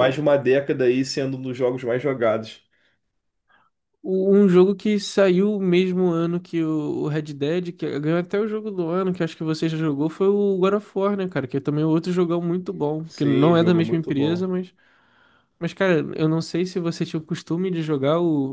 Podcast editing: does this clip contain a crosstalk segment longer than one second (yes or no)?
yes